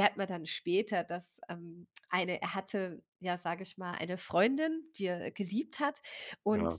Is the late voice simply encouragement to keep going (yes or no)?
yes